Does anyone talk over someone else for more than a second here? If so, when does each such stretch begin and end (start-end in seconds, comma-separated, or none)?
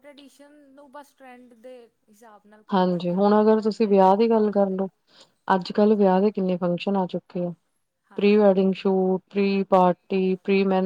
2.7-4.9